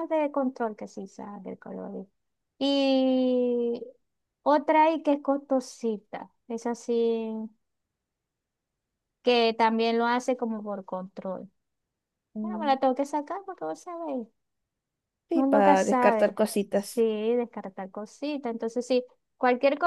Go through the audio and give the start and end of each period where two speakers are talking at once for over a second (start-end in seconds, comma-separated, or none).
15.3-17.1